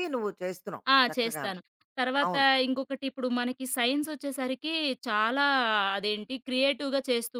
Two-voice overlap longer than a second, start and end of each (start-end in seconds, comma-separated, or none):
none